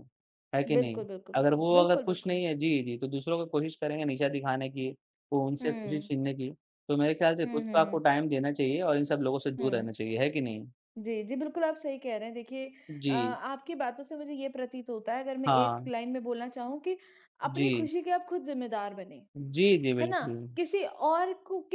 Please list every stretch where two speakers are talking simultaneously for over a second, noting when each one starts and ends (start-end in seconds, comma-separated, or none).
0.7-2.4